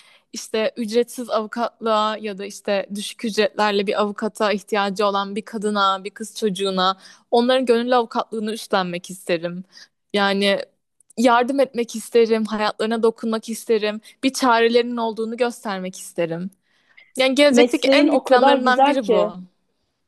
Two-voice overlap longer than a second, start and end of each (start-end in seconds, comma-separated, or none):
17.5-19.3